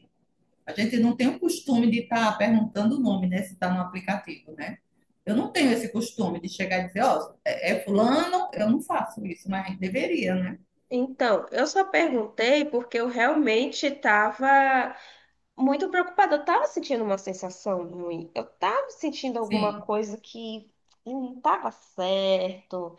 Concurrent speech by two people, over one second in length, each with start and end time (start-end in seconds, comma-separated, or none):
none